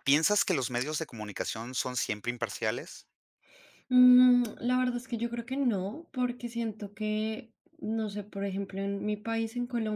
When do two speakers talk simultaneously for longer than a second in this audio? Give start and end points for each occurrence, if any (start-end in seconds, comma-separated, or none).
none